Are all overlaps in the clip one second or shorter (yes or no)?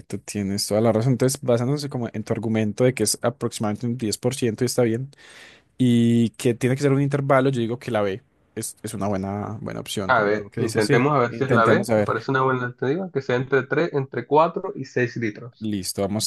no